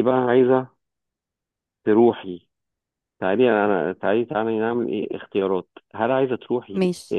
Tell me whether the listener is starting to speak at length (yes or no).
no